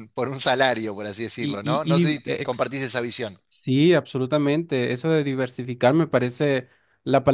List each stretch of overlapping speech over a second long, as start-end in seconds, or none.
1.4-2.7